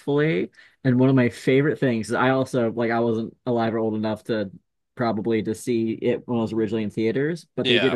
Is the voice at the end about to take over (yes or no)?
no